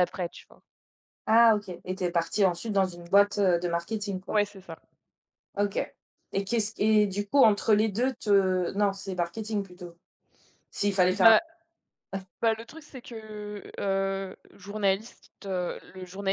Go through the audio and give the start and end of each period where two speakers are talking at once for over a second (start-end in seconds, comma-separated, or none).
none